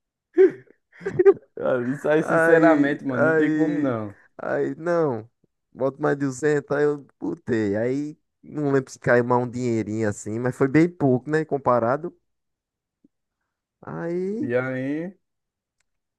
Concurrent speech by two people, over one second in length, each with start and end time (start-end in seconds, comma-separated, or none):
2.2-4.0